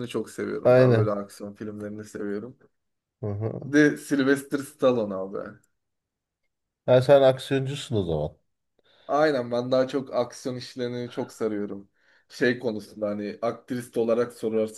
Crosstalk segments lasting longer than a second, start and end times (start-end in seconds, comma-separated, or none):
none